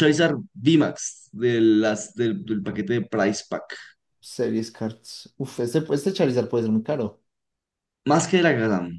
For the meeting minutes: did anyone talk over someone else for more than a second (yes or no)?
no